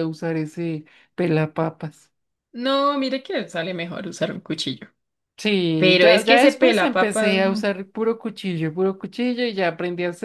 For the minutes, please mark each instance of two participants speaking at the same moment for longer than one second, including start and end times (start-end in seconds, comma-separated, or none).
5.8-7.7